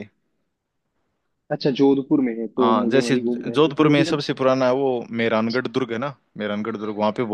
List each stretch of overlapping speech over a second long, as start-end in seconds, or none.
2.6-4.0